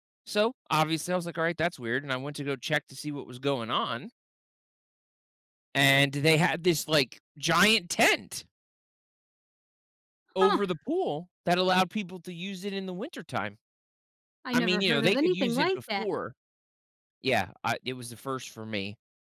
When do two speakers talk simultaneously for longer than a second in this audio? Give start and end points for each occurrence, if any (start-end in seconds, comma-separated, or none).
14.5-16.1